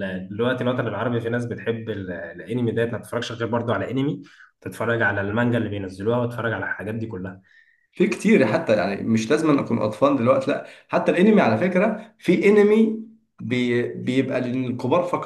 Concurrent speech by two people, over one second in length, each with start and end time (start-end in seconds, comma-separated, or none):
none